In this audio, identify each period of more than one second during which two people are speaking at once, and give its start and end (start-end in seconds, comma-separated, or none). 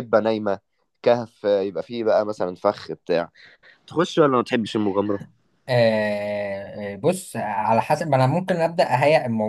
none